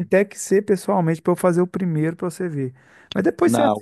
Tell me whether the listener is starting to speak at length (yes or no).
no